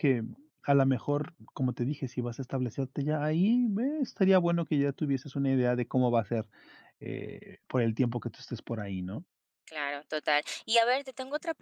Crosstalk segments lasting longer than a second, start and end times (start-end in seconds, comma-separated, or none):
none